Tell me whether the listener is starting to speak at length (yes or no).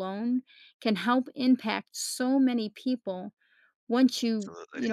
no